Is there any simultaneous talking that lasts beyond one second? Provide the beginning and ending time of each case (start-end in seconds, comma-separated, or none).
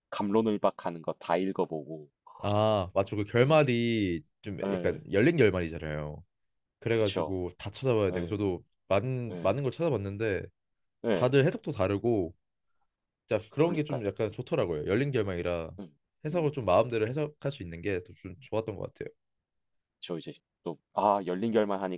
none